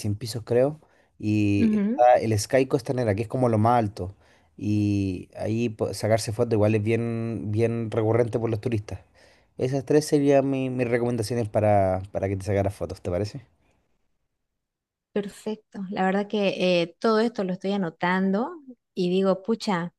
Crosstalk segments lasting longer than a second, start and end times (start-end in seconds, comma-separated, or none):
none